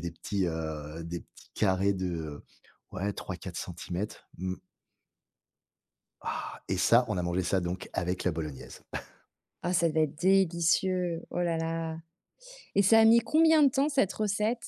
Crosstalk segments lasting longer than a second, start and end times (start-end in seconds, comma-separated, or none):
none